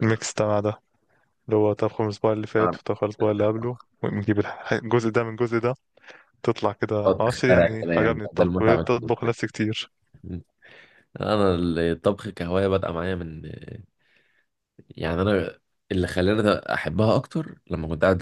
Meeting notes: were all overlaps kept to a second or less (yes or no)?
no